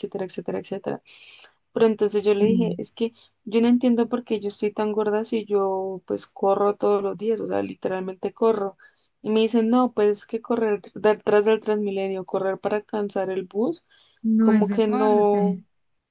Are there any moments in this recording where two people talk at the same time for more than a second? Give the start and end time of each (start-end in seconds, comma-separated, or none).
14.4-15.6